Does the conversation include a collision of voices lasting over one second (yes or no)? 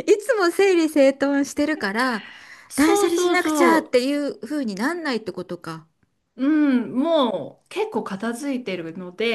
yes